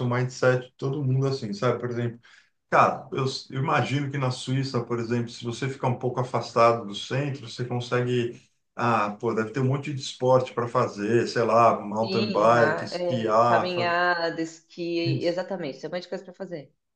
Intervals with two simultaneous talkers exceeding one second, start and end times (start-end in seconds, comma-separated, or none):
12.0-13.9